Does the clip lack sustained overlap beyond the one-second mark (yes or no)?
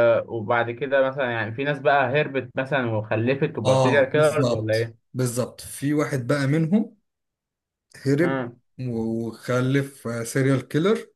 no